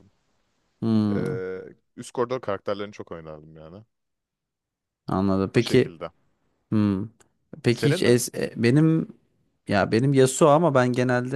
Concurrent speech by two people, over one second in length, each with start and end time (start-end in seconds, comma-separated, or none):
none